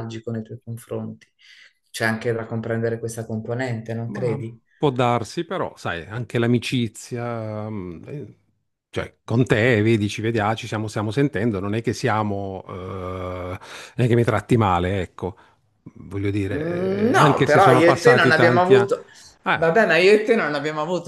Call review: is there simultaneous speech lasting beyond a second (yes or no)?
yes